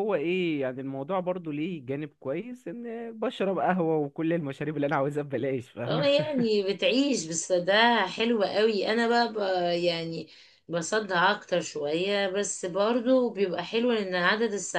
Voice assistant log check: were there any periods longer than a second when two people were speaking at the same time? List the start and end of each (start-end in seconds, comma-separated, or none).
none